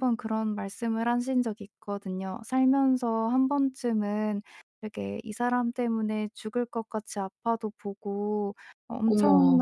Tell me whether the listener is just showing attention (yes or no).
yes